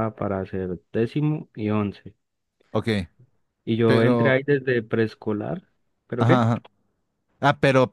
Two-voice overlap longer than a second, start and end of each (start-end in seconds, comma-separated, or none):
none